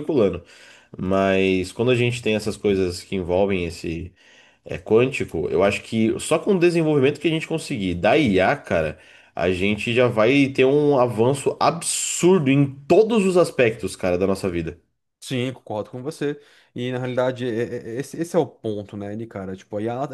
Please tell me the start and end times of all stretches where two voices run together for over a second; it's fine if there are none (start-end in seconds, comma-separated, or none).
none